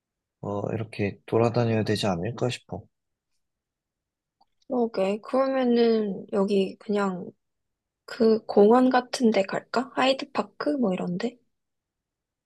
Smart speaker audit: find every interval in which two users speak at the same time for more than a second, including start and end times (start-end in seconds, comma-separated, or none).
none